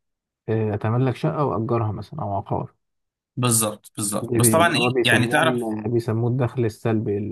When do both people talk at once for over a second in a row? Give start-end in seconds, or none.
4.2-5.6